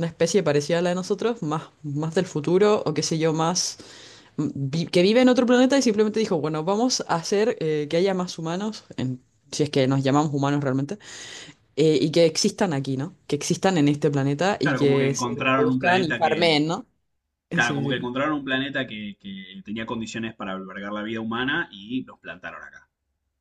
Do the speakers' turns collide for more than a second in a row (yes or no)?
yes